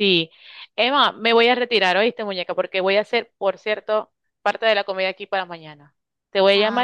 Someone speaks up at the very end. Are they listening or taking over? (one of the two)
listening